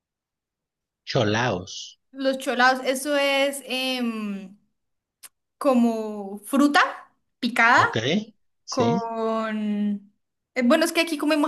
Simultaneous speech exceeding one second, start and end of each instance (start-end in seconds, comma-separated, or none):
none